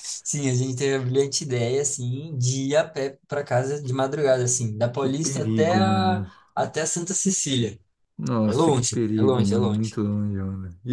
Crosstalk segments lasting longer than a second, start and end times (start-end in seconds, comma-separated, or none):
5.0-6.3, 8.4-9.9